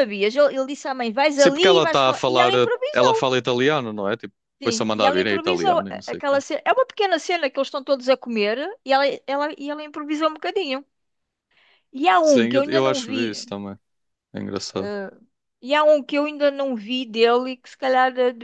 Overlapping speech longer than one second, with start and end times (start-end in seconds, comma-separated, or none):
1.3-3.3, 4.6-6.4, 12.2-13.4